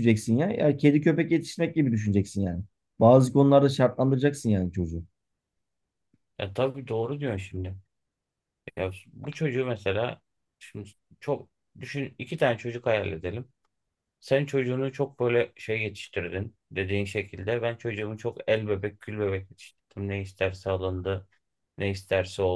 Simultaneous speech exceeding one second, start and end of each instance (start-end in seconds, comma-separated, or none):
none